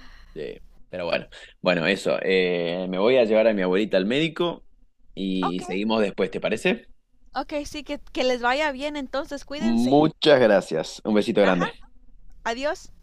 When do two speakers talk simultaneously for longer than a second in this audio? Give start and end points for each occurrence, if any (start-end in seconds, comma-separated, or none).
none